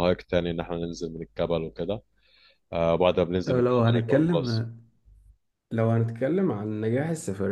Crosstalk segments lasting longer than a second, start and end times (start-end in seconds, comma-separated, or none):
3.4-4.7